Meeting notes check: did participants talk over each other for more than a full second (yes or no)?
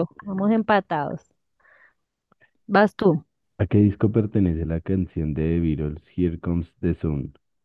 no